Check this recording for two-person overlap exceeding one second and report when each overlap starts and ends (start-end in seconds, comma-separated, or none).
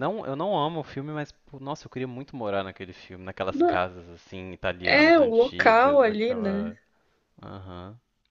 4.8-6.7